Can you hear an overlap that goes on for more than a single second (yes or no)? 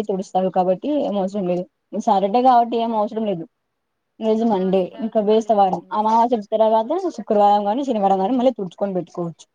yes